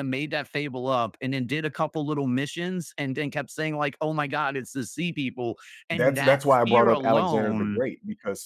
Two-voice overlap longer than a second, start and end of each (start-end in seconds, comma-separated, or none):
5.9-7.8